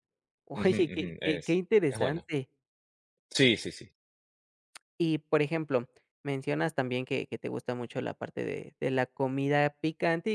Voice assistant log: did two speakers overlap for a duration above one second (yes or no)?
yes